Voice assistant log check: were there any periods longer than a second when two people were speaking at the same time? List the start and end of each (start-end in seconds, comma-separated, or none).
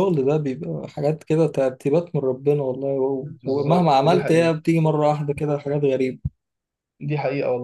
3.2-4.5